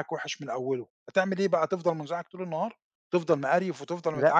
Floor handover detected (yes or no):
no